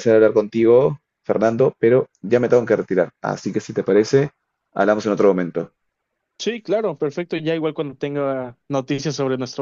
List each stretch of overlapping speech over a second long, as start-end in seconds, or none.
none